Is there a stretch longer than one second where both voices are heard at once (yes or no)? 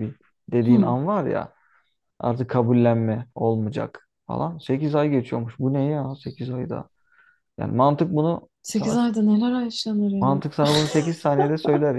no